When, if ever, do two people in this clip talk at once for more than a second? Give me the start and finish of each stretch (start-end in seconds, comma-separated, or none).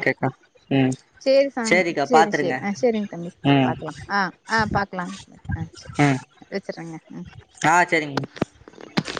1.7-3.7